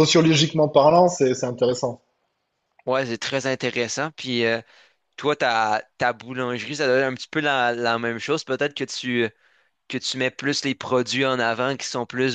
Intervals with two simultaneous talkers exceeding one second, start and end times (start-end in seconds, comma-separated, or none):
none